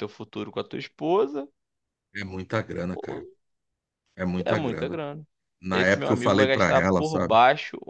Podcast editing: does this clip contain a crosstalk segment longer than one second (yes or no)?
yes